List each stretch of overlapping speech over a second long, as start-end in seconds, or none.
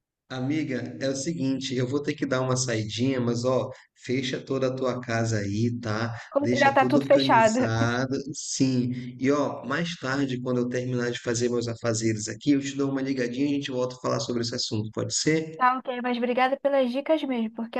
6.3-7.6